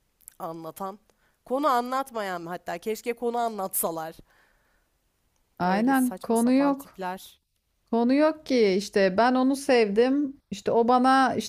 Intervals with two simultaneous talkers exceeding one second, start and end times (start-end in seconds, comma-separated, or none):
5.6-7.0